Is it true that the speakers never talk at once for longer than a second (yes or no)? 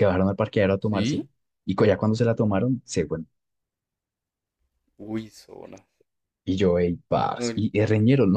yes